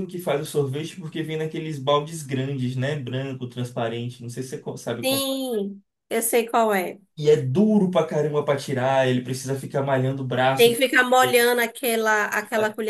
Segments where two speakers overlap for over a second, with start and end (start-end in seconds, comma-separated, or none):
none